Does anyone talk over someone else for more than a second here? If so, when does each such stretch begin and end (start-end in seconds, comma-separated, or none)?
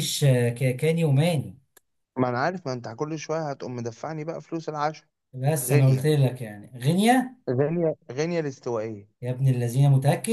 none